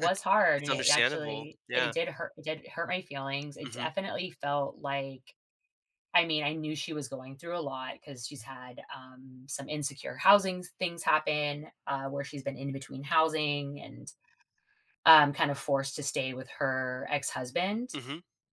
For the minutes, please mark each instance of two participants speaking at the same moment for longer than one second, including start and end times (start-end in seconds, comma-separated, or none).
0.6-1.9